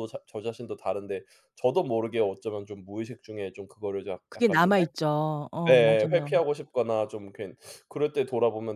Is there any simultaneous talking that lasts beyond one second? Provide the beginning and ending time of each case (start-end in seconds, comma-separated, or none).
none